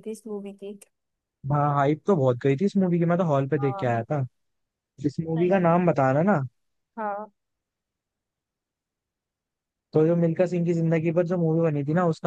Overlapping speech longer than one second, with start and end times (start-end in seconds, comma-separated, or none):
none